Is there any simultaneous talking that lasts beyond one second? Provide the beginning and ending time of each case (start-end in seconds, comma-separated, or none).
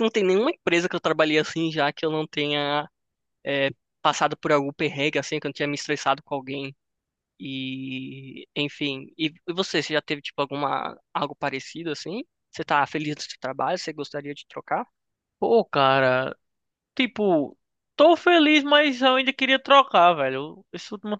none